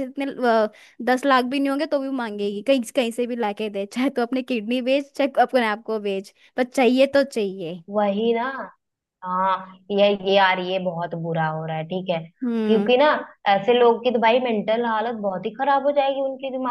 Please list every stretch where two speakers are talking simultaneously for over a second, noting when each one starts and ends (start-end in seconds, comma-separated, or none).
none